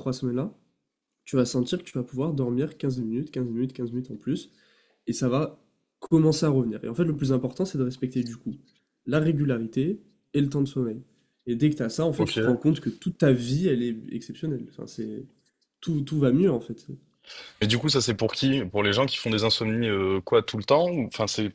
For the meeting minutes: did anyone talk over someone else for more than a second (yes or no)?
no